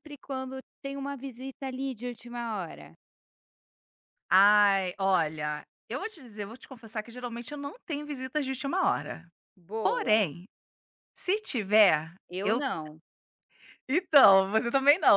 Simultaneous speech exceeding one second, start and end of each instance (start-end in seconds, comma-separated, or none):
none